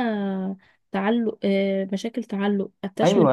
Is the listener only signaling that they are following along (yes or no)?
no